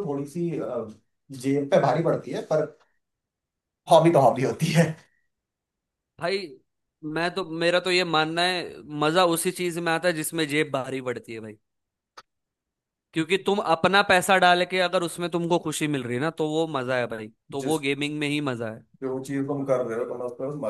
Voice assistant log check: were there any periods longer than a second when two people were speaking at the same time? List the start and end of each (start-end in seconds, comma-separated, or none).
none